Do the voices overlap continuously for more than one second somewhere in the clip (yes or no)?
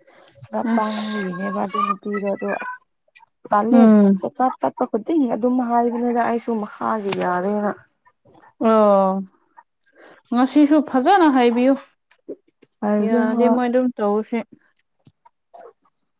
no